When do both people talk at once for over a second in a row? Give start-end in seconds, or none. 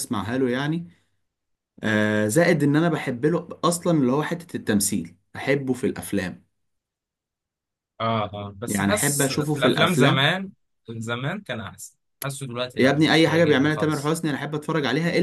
8.7-10.3, 12.8-14.2